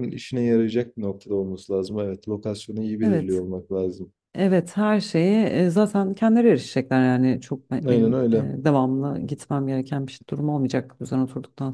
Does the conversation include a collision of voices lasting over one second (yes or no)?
no